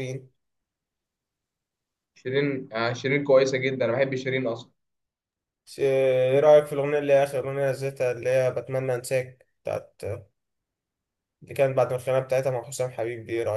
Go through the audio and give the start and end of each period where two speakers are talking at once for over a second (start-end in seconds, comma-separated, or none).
none